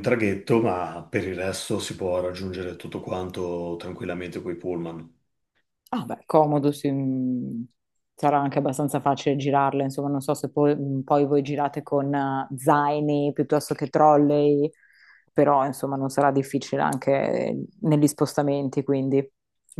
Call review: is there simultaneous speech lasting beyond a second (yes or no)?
no